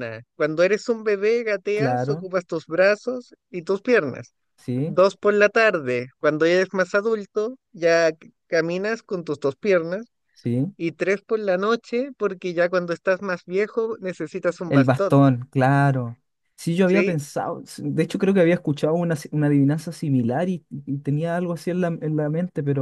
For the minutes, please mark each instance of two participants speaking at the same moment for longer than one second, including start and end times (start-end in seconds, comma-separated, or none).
none